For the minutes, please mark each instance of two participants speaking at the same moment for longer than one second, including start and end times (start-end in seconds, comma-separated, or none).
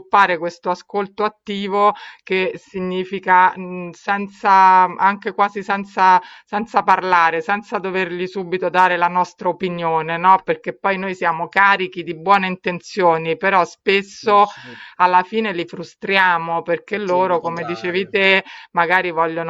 16.9-18.1